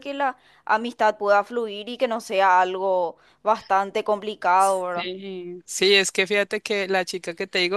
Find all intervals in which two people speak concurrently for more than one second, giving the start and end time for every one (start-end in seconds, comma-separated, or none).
none